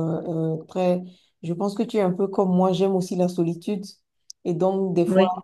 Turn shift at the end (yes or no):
no